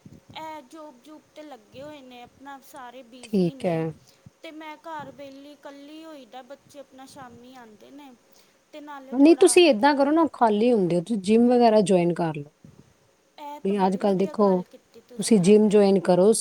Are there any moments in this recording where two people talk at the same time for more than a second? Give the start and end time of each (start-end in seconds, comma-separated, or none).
none